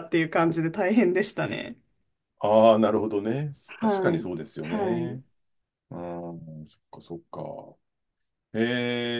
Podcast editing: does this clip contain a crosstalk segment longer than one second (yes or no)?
yes